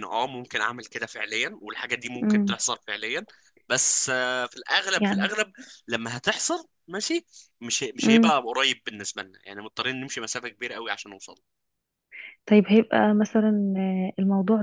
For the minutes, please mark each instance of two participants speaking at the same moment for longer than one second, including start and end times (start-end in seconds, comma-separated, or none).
none